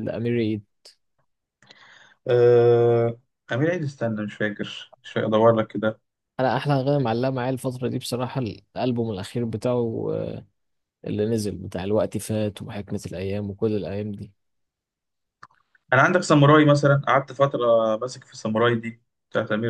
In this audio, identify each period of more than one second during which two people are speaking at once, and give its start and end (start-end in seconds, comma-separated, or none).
none